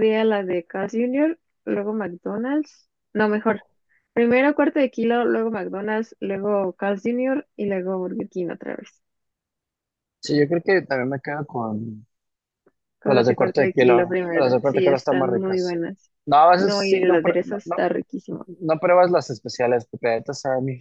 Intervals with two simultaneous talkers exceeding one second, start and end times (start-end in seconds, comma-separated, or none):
13.0-15.8, 16.6-17.8